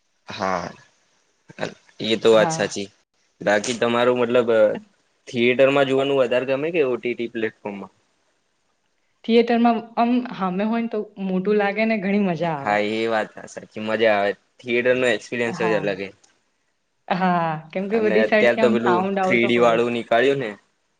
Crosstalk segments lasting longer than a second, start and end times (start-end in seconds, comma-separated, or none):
17.9-19.8